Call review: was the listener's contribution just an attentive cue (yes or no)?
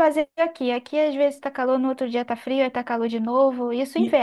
no